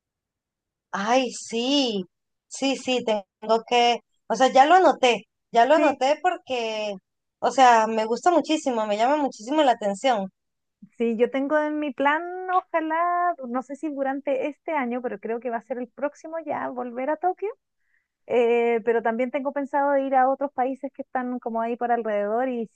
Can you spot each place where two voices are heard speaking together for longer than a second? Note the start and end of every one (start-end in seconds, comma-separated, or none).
none